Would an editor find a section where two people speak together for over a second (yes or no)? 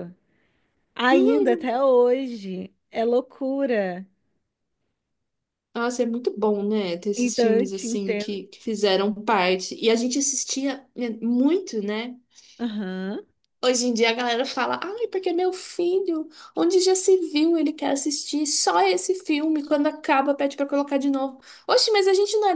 yes